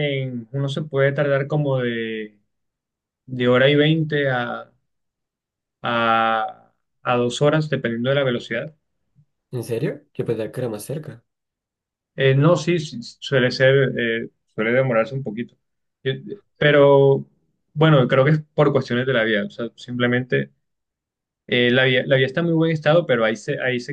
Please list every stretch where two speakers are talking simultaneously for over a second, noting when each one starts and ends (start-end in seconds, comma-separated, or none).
none